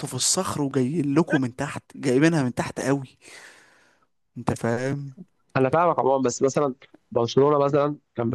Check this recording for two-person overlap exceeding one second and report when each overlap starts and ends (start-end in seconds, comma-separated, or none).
none